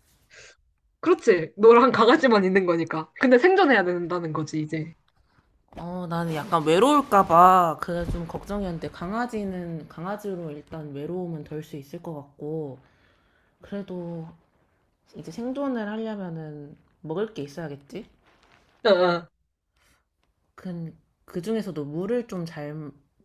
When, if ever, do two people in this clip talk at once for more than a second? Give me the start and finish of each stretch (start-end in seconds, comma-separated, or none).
none